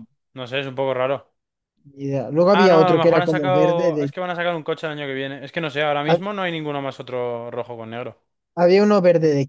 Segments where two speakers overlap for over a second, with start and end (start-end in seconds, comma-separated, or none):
2.5-4.1